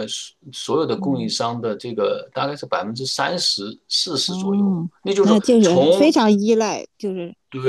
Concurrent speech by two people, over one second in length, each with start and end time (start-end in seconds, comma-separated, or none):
4.3-6.1